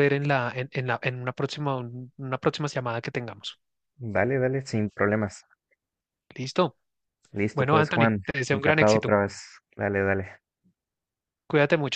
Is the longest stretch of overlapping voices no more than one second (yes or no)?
no